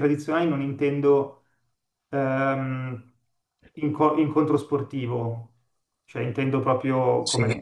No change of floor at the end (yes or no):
no